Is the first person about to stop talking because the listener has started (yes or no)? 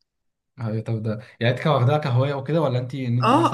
yes